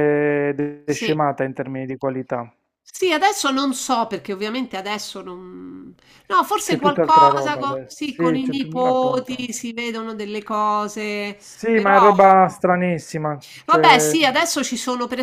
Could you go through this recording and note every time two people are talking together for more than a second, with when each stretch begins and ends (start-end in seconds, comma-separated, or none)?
6.6-9.4